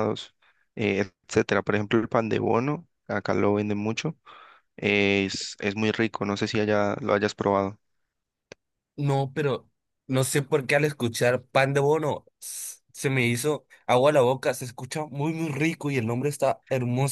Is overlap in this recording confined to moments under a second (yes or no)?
yes